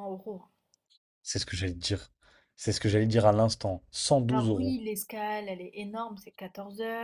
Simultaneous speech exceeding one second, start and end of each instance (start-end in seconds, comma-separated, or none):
none